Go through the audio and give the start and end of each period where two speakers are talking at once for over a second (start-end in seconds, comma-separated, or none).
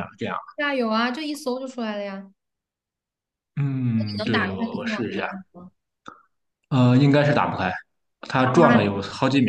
3.9-5.3